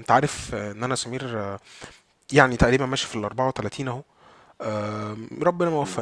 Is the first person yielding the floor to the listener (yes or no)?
no